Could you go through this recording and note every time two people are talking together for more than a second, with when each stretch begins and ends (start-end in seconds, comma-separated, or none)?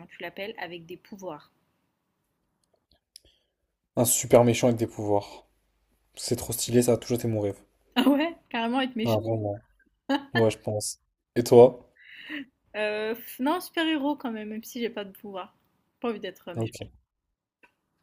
none